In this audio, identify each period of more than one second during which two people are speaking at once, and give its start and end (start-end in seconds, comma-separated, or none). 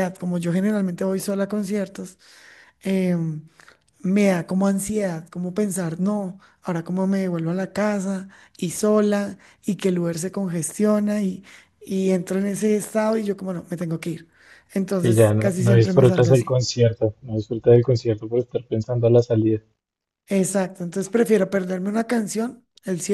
14.9-16.6